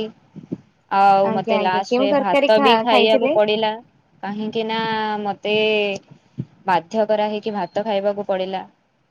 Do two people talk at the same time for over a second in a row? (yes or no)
yes